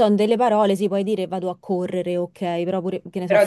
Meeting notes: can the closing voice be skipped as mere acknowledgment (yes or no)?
no